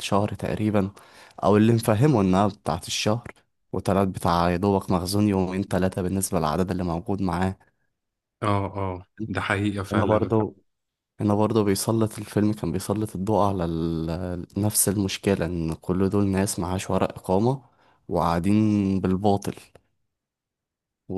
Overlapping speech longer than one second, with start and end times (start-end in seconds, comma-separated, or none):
none